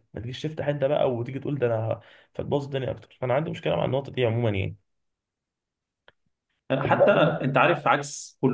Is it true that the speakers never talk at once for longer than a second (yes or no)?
yes